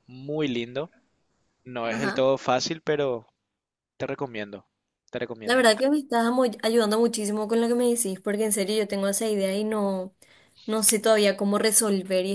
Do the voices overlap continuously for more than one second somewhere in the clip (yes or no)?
no